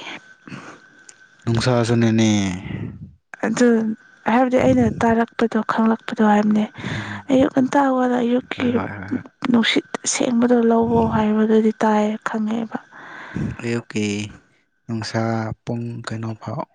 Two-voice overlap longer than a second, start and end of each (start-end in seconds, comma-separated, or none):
none